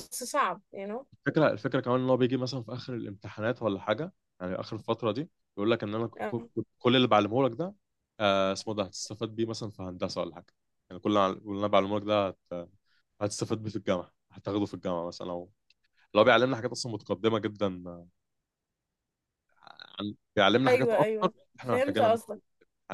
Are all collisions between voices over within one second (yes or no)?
no